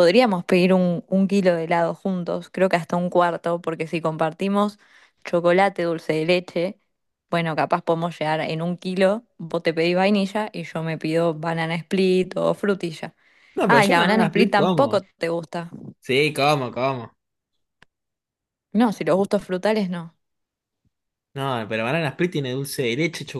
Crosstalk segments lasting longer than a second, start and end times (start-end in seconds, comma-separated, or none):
13.7-15.0